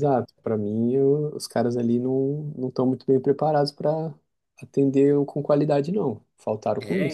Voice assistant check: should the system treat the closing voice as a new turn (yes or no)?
yes